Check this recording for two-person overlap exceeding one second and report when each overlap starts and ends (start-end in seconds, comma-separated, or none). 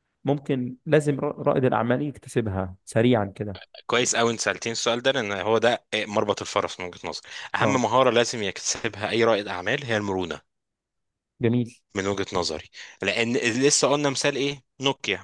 none